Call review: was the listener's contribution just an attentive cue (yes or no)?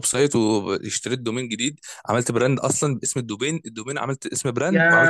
no